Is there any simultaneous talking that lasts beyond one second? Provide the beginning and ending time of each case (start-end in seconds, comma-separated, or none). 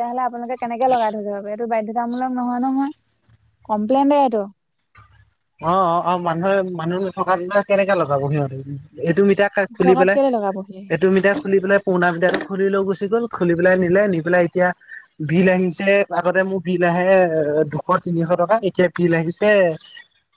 none